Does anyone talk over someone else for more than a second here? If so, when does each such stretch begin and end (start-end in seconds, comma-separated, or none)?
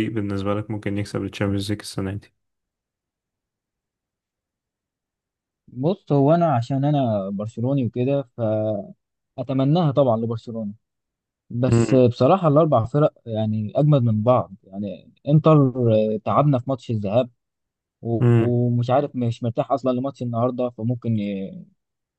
none